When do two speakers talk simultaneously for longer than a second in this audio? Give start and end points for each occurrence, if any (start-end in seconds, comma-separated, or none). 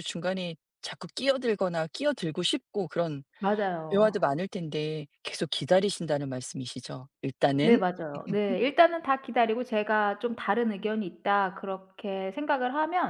none